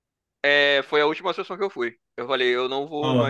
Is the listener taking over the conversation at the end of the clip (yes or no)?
yes